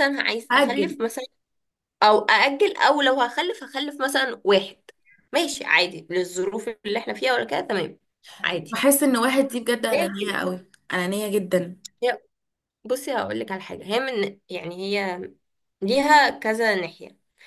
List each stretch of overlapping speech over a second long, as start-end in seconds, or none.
none